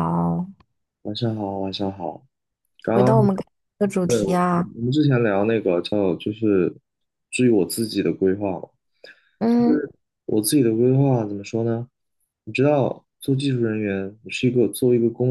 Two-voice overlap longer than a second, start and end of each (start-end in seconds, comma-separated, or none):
none